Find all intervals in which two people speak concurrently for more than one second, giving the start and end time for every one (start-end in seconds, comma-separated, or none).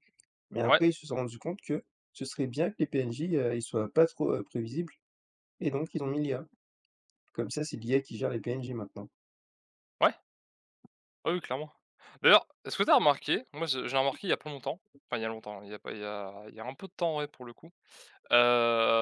none